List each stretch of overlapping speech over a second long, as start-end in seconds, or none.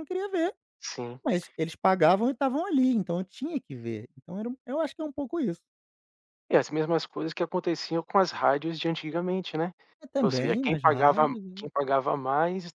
10.2-11.7